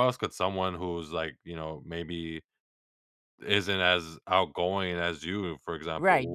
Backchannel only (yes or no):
no